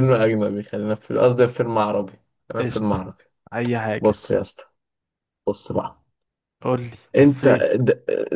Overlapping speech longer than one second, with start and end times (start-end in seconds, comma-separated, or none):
none